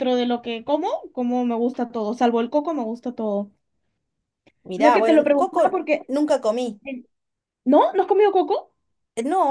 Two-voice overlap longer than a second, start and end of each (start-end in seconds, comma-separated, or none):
4.8-6.1